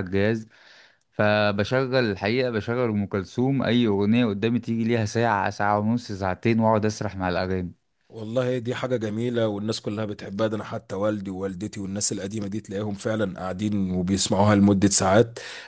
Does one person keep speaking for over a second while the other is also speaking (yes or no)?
no